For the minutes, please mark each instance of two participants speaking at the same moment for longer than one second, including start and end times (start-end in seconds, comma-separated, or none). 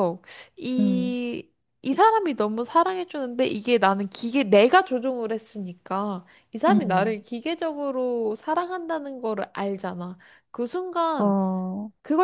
none